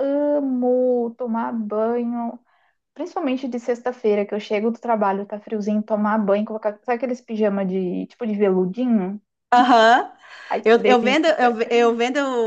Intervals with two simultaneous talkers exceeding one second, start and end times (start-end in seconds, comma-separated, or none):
none